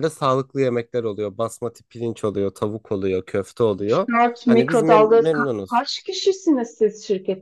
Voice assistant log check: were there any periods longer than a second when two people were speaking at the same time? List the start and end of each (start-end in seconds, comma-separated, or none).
4.5-5.8